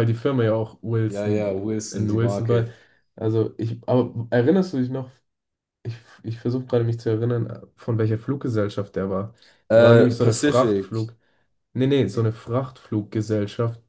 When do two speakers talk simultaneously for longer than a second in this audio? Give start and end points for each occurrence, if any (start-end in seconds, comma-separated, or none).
1.1-2.7, 9.8-11.0